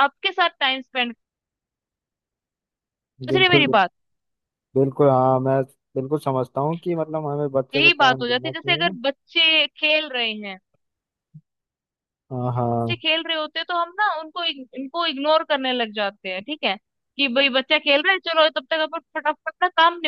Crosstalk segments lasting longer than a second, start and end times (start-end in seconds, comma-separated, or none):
7.7-9.0